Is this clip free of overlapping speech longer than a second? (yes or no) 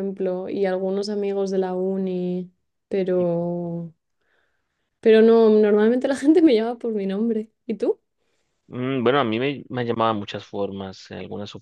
yes